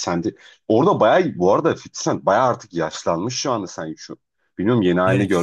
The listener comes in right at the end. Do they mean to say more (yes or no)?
yes